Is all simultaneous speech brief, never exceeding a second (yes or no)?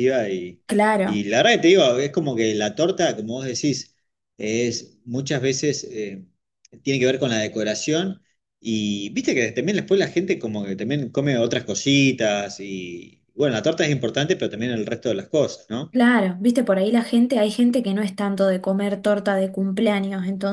yes